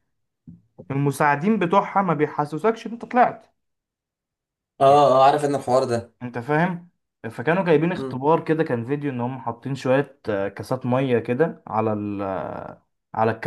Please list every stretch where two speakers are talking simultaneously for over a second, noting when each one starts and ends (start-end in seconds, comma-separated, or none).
none